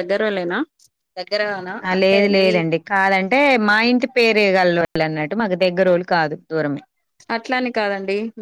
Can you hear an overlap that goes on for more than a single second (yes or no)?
no